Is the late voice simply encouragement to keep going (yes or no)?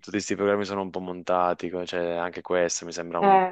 yes